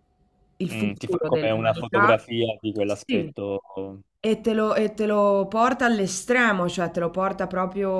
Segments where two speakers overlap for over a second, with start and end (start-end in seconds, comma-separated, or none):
0.7-2.1